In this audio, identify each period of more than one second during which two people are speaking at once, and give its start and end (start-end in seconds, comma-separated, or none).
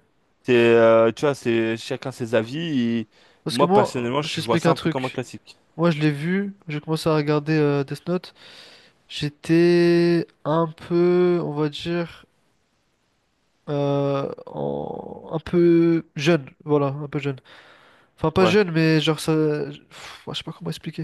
3.5-5.2